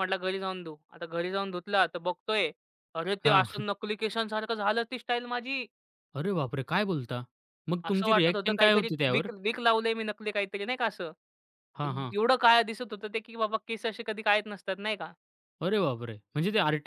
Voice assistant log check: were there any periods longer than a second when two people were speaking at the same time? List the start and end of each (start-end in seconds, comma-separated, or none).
7.8-9.3